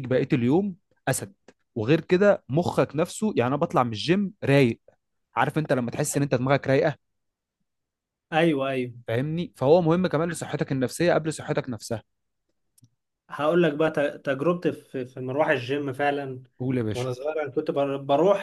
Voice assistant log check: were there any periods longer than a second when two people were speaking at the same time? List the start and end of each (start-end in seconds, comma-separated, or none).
none